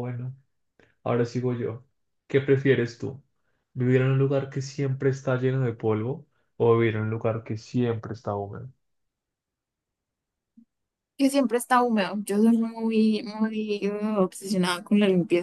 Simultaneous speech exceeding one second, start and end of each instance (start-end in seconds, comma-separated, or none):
none